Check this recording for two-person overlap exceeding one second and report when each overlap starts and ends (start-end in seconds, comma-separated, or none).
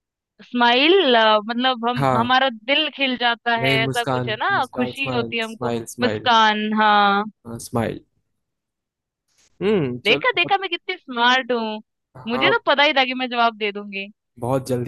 3.6-6.3